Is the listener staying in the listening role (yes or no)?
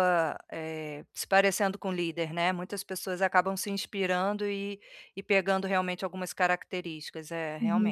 no